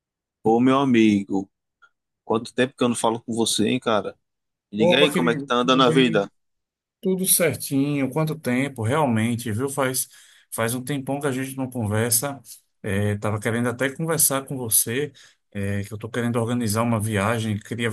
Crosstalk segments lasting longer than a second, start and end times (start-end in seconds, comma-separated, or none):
4.8-6.3